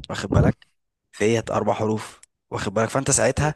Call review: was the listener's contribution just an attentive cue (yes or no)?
yes